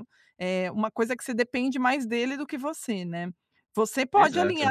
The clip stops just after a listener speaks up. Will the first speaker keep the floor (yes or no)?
yes